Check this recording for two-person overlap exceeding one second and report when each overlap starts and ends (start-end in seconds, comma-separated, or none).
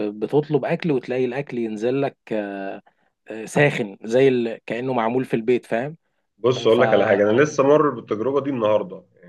none